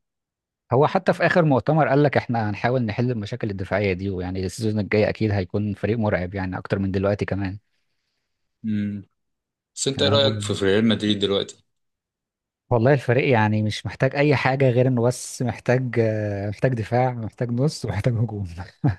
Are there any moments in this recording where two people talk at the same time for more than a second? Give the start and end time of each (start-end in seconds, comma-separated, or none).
none